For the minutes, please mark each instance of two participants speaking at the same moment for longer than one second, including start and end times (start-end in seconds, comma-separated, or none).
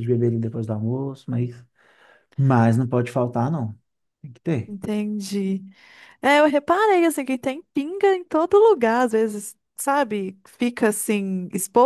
none